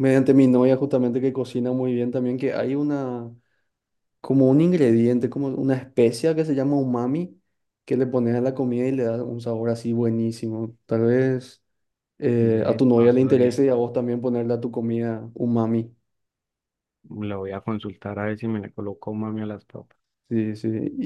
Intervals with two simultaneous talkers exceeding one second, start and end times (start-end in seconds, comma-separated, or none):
12.4-13.7